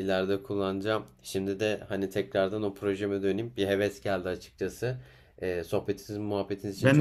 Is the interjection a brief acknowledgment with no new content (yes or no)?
no